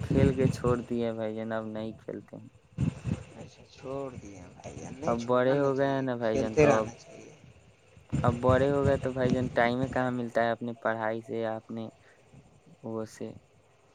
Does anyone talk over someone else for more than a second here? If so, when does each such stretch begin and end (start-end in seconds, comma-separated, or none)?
5.1-6.9